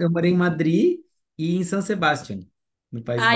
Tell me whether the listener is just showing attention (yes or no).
no